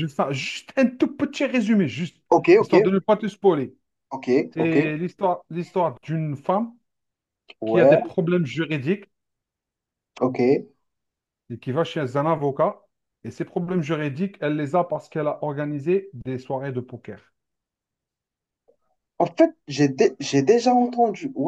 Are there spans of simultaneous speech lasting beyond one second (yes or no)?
no